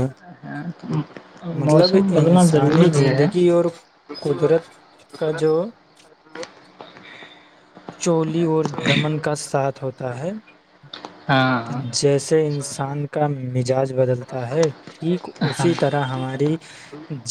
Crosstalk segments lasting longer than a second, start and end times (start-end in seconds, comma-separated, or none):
1.7-3.3